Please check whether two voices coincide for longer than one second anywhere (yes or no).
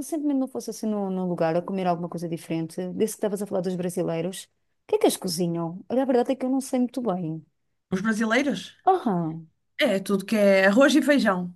no